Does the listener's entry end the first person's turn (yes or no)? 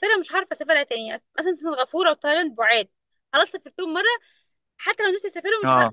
no